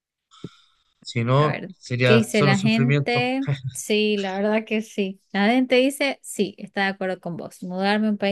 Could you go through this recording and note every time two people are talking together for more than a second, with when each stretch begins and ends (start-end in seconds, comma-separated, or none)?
1.3-3.3